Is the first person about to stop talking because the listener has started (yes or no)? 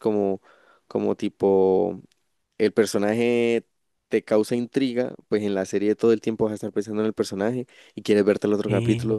no